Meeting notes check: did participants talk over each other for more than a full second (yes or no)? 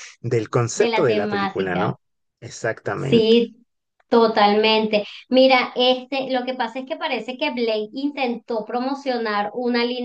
yes